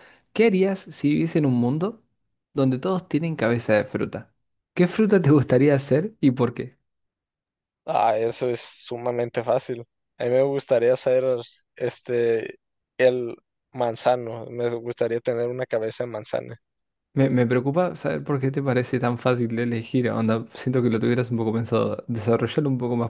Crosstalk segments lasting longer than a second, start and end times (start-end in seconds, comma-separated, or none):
none